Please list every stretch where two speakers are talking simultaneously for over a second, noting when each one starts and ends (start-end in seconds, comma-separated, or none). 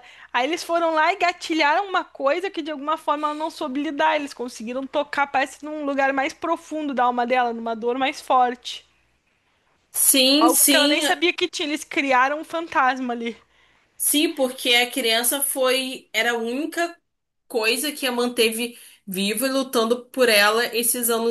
none